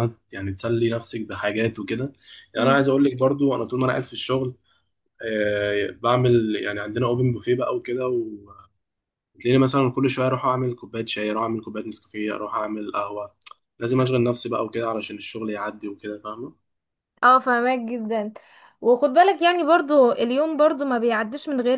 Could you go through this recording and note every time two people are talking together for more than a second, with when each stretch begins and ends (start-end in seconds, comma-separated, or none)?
none